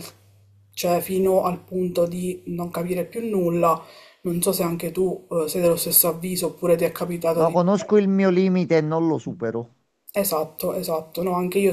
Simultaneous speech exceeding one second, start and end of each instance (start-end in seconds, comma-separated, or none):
none